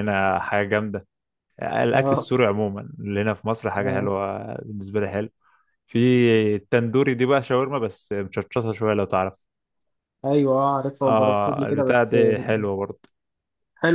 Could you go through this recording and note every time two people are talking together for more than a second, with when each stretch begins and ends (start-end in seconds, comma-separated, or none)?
11.0-12.6